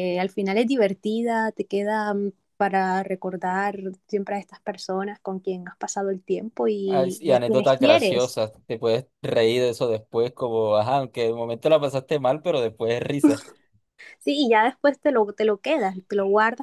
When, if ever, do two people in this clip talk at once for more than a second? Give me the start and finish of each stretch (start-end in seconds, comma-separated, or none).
6.9-8.4